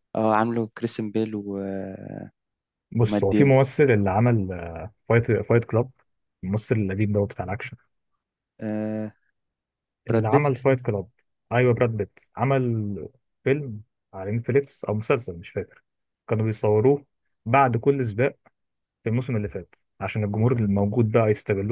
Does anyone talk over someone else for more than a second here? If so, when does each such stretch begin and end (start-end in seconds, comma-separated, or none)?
none